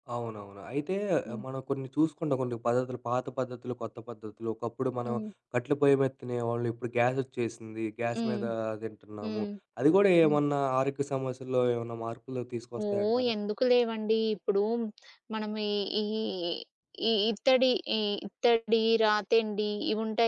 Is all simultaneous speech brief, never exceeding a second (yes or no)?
yes